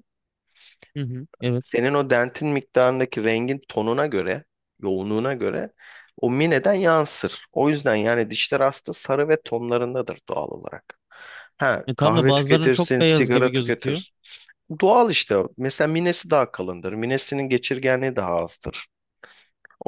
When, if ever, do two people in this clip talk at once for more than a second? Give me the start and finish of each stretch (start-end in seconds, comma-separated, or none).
11.9-14.0